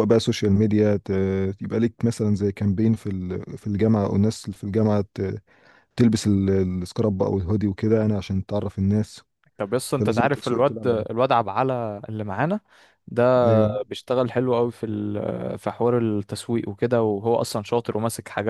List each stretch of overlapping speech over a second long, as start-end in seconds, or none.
9.9-11.2